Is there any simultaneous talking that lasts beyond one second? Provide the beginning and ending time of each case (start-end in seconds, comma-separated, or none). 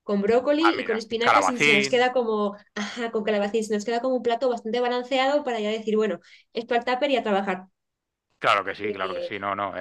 0.6-2.1